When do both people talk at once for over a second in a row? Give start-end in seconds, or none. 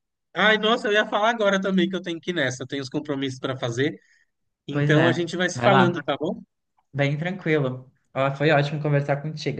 4.7-6.0